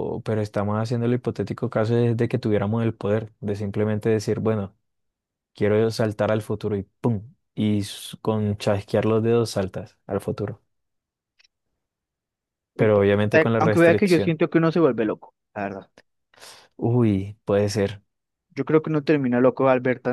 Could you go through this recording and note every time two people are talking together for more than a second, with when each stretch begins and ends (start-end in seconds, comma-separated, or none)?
12.8-14.3